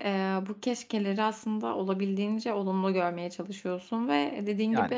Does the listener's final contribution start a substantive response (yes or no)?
no